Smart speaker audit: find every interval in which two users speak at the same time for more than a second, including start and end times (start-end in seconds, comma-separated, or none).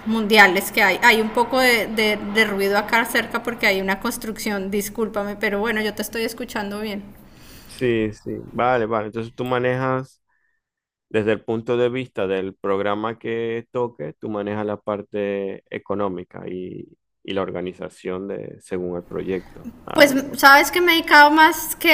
none